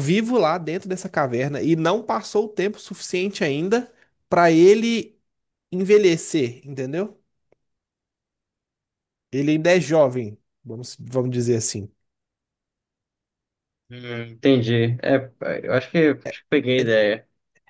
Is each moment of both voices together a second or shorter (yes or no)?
yes